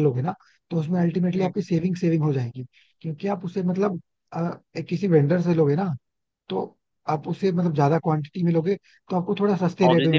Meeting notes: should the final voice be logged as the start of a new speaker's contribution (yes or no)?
yes